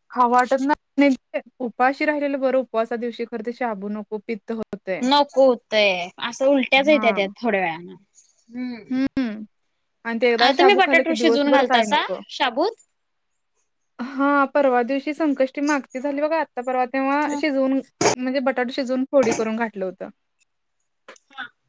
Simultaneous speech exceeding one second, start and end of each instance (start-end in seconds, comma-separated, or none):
10.4-12.2